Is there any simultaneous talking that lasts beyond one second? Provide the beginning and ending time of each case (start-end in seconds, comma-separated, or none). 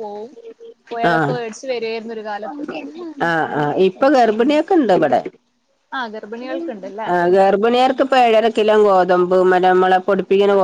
none